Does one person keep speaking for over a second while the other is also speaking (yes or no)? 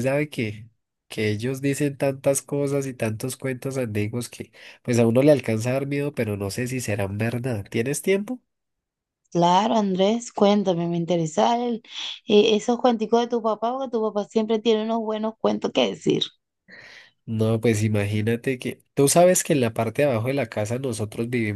no